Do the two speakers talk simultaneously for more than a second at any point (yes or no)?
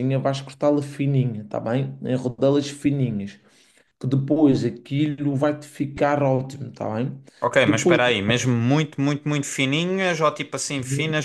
no